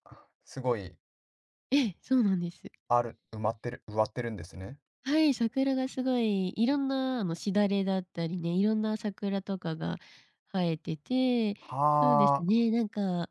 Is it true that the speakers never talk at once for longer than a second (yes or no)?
yes